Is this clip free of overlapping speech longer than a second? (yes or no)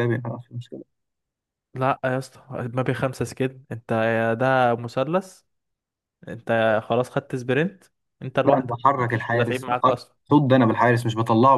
no